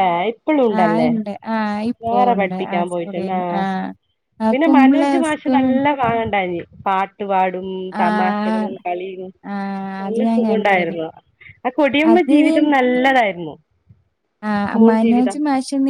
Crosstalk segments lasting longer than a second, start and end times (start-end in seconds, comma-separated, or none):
8.0-9.2